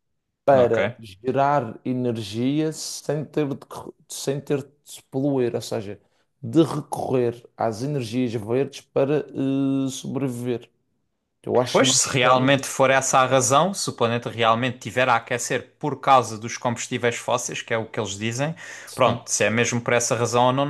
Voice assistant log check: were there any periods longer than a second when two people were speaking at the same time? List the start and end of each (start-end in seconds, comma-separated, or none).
11.7-13.0